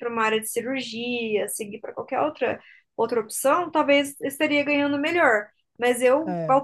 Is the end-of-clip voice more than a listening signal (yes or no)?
no